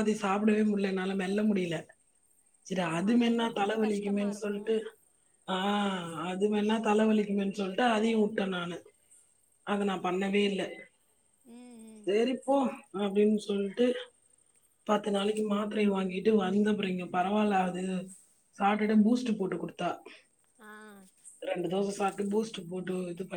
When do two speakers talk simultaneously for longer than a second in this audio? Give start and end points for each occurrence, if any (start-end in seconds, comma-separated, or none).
2.9-4.6